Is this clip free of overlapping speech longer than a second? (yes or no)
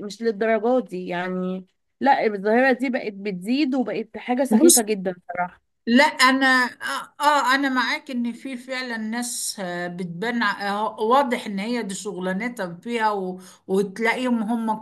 yes